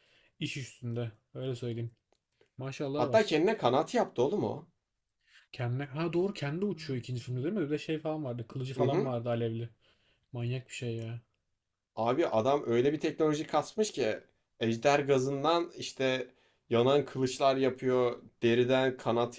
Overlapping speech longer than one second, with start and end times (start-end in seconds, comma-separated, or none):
none